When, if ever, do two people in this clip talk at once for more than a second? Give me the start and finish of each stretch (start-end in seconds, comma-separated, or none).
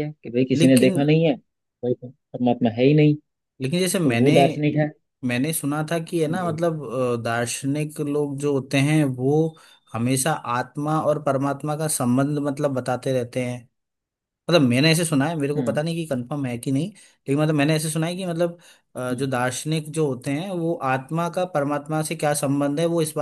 none